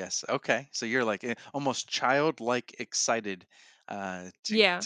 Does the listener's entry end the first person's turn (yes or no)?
no